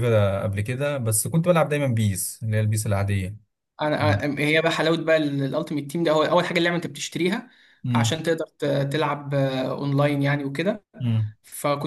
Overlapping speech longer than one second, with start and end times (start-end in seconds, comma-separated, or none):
none